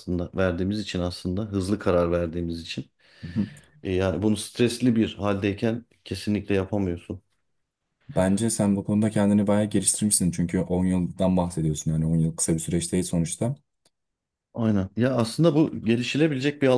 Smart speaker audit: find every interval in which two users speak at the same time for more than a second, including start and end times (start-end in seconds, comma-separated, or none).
none